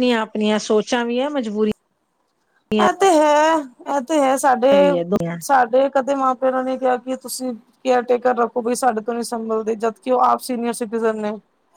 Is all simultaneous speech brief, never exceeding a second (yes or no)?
yes